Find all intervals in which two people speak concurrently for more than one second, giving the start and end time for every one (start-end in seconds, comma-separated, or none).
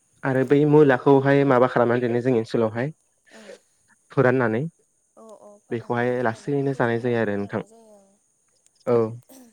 5.7-7.6